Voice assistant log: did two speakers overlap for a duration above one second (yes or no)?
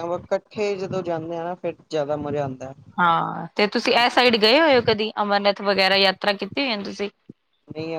no